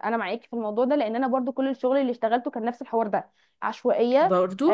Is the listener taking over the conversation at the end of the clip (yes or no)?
no